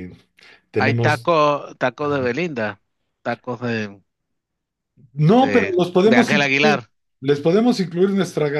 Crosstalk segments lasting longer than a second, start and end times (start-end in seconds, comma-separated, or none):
5.4-6.8